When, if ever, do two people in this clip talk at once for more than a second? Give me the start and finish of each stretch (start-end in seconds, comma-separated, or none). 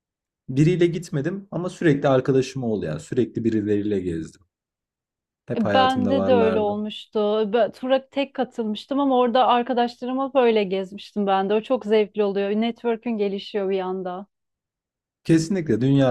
5.5-6.8